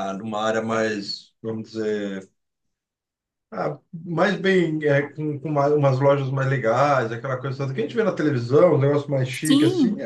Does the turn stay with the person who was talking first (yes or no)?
yes